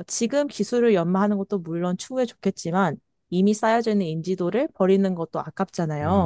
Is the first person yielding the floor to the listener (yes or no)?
no